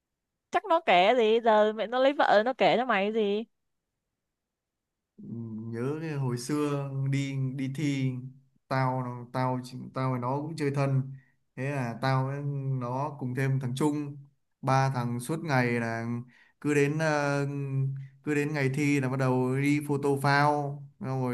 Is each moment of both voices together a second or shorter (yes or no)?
yes